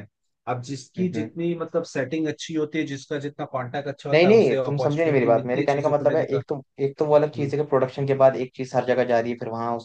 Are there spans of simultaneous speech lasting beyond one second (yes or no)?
yes